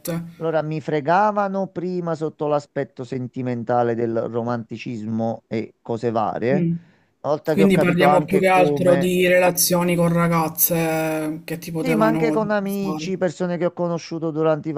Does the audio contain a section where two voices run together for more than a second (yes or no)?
yes